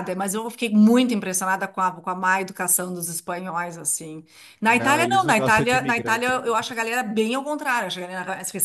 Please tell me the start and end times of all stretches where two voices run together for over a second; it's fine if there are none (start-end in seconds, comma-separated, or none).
4.7-6.4